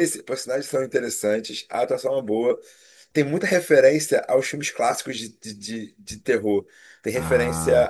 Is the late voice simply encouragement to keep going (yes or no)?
yes